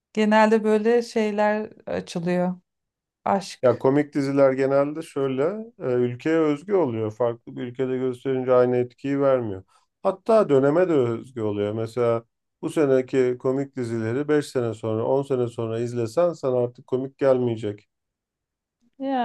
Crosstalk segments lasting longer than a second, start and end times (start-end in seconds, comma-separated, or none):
none